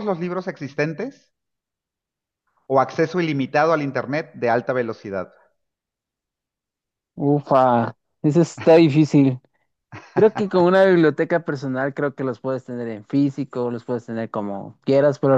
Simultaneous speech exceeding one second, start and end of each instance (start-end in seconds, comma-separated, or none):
none